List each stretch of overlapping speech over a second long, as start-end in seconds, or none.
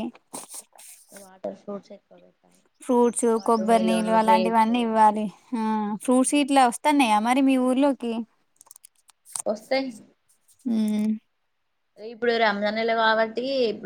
3.4-4.7